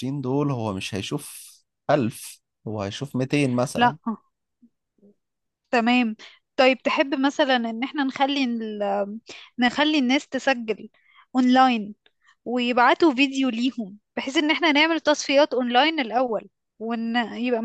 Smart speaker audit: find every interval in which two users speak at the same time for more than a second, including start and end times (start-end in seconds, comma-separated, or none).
none